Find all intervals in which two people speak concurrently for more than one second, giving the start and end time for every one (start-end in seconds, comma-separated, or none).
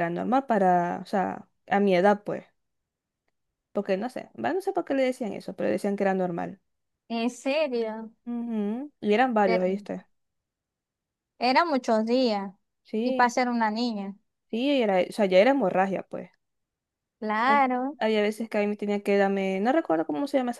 none